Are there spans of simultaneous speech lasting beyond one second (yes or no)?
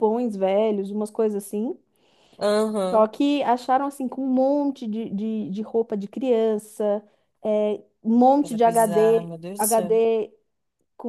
yes